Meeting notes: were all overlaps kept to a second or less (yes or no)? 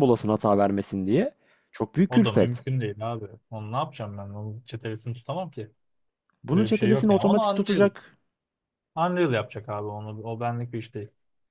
no